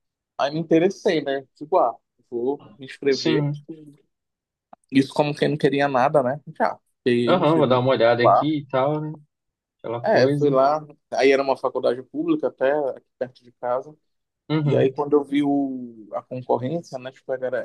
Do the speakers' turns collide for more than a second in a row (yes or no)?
yes